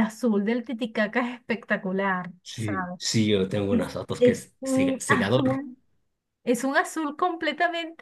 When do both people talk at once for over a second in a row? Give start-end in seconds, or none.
3.7-5.6